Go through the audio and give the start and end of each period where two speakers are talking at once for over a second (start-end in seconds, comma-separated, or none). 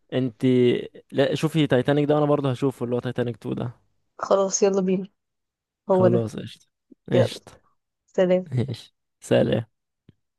none